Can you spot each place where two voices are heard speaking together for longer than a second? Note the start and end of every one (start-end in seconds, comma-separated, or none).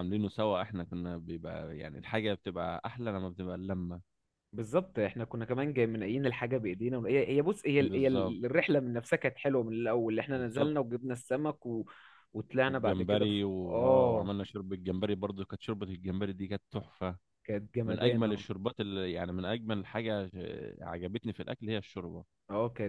12.7-14.3